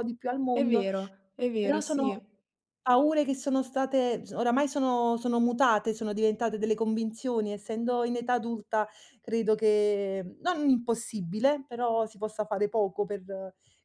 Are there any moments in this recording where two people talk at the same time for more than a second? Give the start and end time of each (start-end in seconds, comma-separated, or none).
none